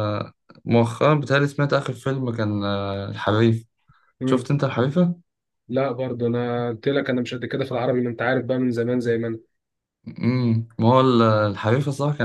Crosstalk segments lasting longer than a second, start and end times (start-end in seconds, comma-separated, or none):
none